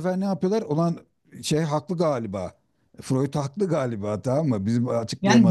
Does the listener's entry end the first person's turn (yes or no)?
yes